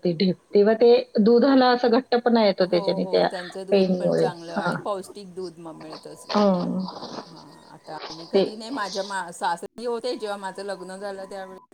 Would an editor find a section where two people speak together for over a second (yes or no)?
no